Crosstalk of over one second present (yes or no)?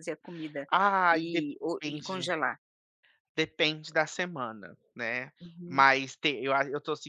yes